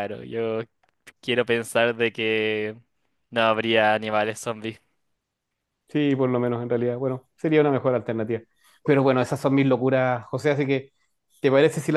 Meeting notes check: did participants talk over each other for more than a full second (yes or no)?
no